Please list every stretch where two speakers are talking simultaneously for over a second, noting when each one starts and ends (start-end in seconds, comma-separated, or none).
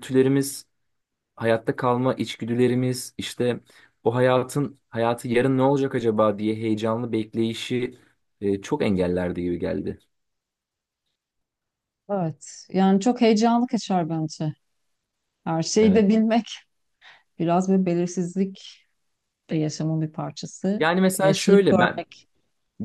20.8-22.0